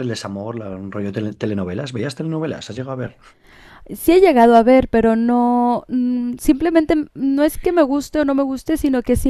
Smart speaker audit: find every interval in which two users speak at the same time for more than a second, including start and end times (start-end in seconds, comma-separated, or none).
none